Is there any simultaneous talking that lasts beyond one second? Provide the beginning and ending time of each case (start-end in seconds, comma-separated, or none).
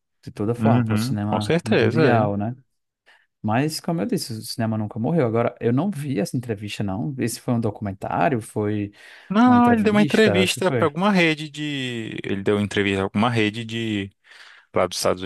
0.6-2.5, 9.4-10.9